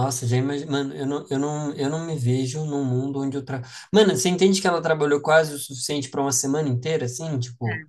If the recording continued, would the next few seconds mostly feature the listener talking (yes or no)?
no